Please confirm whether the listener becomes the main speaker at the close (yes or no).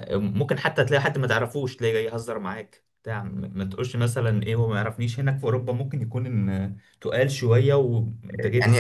yes